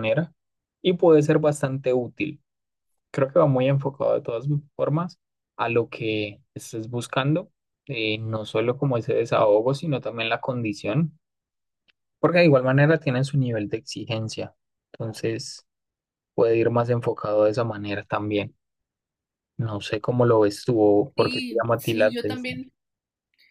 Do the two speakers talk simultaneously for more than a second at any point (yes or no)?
yes